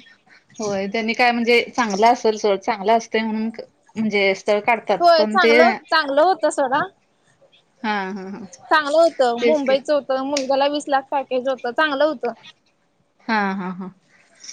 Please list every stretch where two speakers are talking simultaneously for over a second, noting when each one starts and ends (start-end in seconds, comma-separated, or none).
none